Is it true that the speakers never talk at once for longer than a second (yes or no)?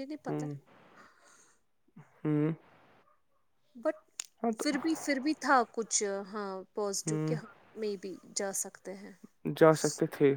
yes